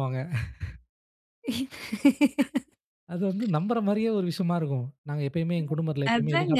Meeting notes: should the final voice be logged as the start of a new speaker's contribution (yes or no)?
yes